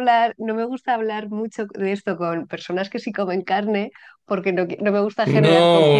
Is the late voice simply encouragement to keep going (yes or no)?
no